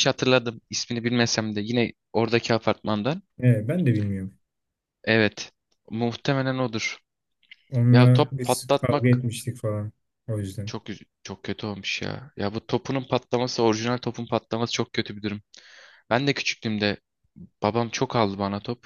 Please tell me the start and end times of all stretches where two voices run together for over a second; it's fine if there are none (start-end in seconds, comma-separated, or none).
7.9-9.2